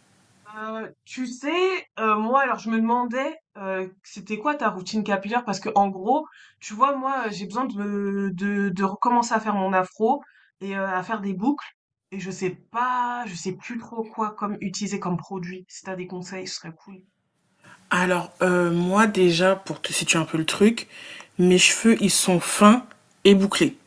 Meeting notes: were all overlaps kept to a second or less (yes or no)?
yes